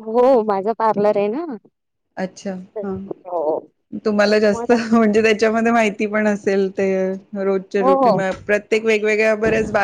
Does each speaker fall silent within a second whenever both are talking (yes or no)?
yes